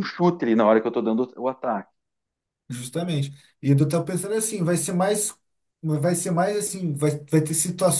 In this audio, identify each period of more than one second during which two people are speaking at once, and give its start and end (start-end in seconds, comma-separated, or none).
none